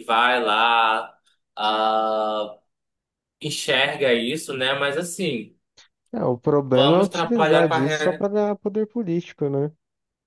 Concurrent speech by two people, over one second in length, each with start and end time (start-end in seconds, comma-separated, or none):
6.7-8.3